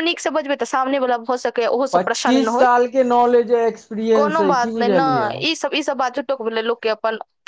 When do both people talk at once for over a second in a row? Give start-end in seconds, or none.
none